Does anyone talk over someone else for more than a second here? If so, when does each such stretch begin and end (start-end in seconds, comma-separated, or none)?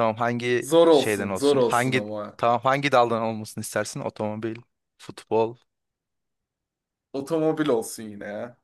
0.6-2.4